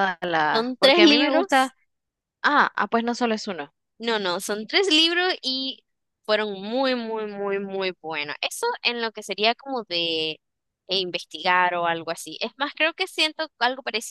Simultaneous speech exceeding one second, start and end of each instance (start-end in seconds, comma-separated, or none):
0.5-1.7